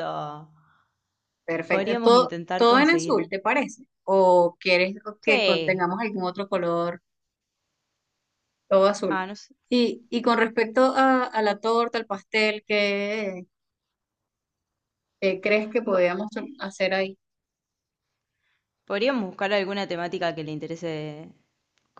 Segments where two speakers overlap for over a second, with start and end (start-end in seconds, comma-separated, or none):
1.7-3.1